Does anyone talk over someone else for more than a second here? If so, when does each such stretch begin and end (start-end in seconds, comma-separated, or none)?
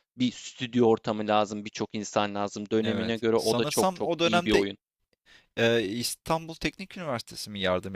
2.8-4.6